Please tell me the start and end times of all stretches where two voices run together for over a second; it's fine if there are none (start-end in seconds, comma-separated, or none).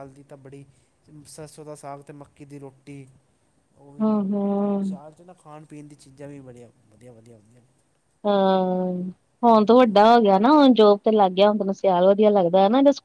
none